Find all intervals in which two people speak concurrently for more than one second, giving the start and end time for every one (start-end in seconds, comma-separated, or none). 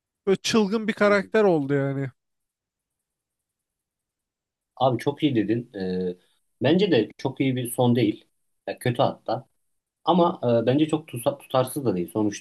none